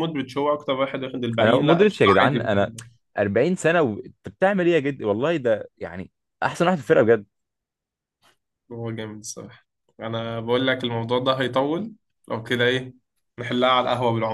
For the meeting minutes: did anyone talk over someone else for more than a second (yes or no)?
yes